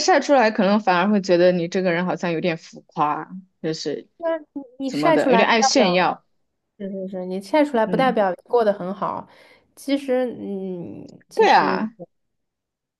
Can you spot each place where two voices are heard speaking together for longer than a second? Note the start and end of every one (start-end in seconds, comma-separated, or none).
4.9-6.2